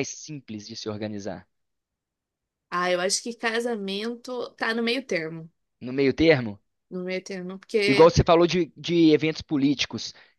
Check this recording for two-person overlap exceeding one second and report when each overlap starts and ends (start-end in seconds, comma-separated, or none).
none